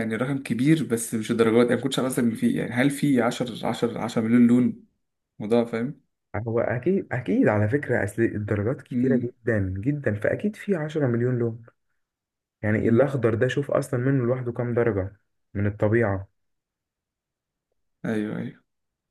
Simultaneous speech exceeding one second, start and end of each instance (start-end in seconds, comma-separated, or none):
none